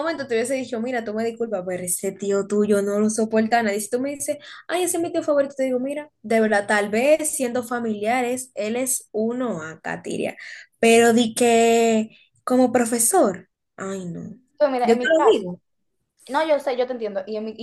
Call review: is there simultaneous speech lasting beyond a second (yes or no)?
no